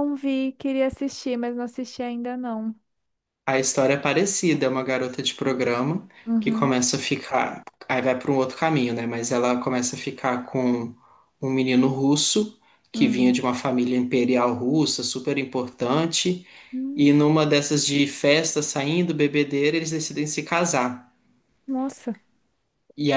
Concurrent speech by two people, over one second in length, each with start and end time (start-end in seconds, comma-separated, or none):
none